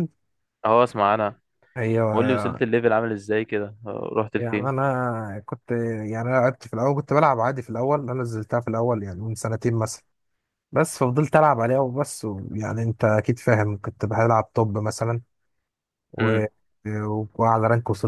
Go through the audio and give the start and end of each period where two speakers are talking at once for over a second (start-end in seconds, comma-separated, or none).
none